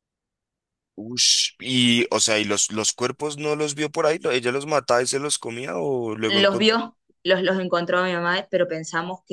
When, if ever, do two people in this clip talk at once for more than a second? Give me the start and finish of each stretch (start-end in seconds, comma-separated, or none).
none